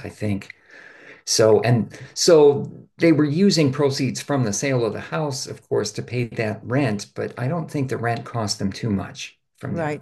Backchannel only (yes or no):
no